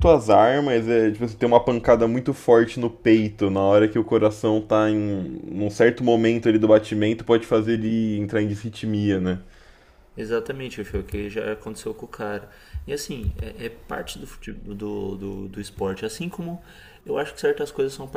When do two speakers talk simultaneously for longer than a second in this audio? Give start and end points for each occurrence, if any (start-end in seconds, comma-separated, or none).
none